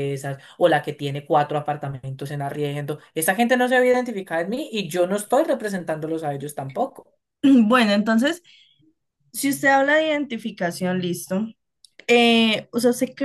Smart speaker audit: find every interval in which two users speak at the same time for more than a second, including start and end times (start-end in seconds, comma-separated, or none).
none